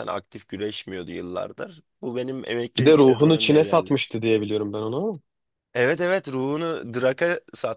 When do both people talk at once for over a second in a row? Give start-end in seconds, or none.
2.8-4.0